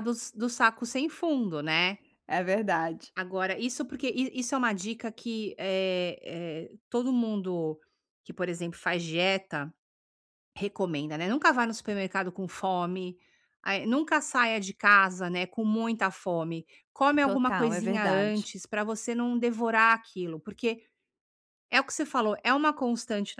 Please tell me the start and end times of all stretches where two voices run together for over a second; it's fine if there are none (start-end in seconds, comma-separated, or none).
17.2-18.5